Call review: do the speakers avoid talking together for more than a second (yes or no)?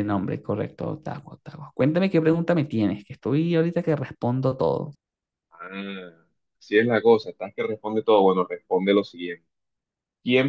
yes